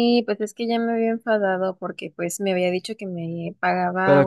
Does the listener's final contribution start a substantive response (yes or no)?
no